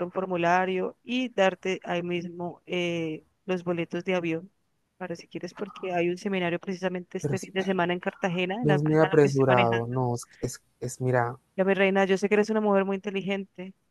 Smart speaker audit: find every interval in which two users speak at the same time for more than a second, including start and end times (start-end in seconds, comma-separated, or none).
8.6-10.0